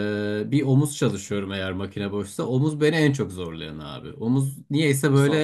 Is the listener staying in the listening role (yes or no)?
yes